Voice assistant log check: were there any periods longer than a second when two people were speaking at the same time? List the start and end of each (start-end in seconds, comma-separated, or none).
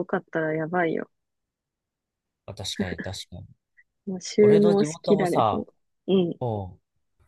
4.4-5.6